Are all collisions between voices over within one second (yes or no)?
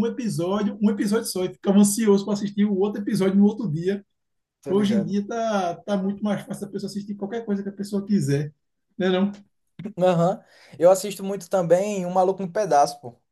yes